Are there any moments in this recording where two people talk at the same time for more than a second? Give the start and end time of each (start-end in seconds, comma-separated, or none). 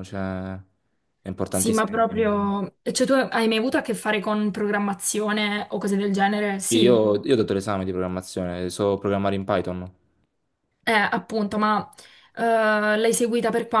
none